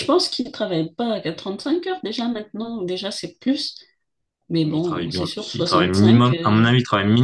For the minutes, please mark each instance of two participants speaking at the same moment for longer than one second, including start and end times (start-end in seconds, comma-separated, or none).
4.7-6.7